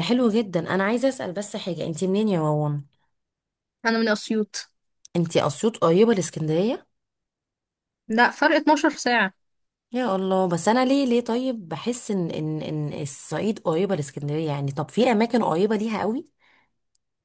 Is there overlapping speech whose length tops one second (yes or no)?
no